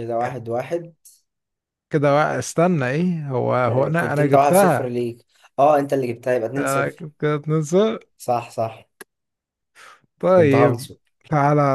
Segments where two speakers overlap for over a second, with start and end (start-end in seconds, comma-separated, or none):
3.7-4.9